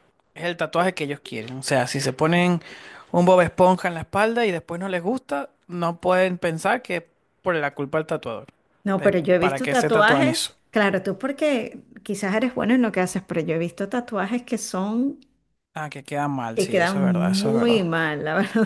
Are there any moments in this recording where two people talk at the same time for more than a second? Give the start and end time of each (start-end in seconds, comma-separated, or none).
9.0-10.5, 16.5-17.8